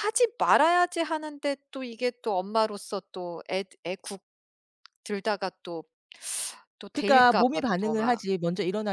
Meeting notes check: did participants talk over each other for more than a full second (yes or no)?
yes